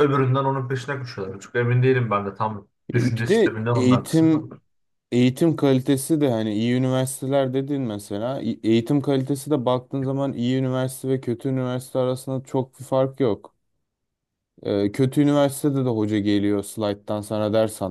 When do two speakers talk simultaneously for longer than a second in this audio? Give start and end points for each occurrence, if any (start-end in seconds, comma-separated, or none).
2.9-4.4